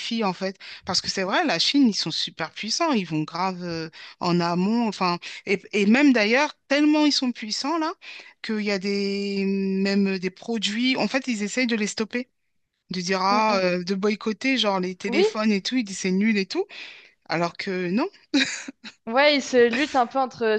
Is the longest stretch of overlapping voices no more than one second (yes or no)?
yes